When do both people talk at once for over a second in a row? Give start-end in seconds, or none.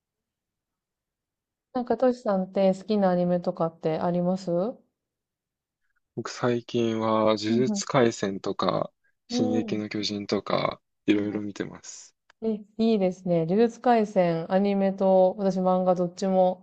none